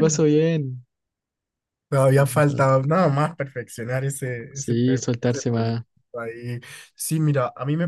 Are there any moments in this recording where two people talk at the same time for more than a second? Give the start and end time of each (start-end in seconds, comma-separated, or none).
4.5-5.8